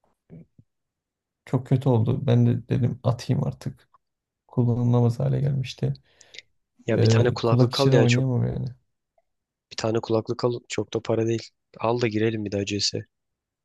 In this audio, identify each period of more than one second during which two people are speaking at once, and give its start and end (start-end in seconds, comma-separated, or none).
7.0-8.2